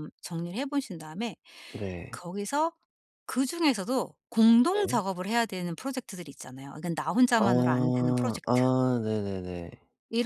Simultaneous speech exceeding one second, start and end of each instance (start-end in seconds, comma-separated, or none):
7.4-8.6